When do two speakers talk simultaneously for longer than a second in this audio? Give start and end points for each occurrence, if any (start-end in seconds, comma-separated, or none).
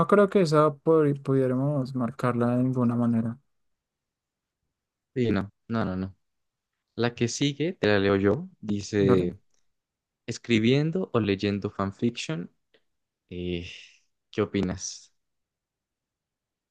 none